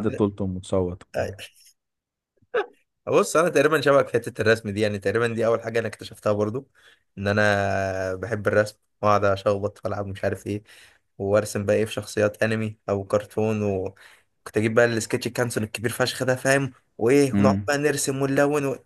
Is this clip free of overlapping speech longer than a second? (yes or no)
yes